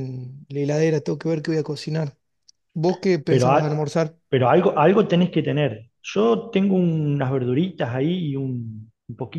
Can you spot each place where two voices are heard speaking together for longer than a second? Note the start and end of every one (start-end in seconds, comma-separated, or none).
none